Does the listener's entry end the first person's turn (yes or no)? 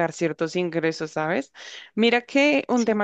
no